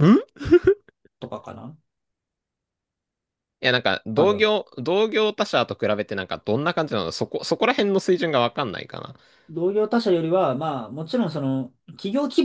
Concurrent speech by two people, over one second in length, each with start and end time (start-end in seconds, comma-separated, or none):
none